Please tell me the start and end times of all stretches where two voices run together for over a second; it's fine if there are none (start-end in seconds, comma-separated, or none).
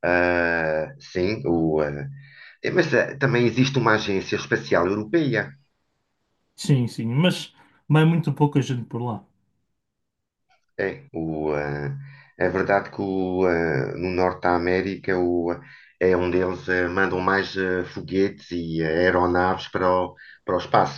none